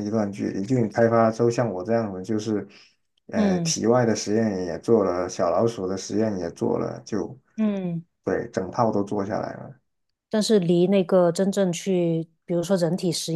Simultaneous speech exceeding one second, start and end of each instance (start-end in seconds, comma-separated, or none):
none